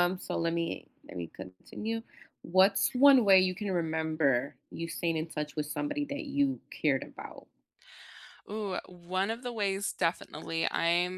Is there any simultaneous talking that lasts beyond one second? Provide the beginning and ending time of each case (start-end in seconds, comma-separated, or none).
none